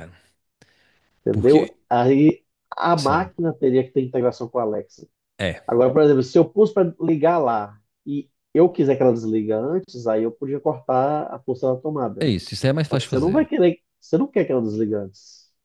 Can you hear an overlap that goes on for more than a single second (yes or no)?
no